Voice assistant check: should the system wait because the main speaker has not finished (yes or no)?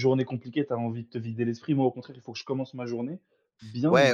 no